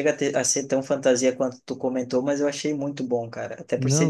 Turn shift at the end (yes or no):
no